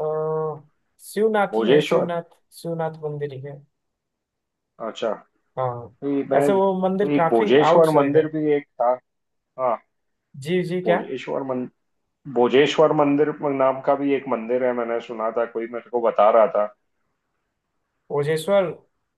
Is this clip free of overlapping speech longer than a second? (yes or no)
no